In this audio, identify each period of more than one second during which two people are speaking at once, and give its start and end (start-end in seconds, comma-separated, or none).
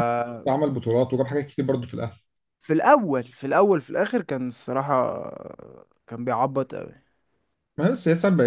none